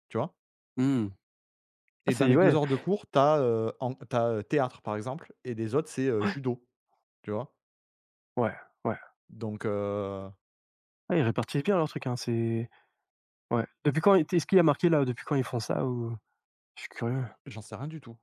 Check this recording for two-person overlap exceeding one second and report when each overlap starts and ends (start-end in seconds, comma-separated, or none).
none